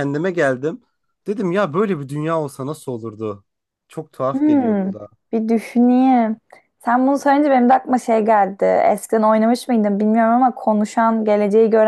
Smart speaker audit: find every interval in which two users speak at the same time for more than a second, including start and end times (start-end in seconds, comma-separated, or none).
none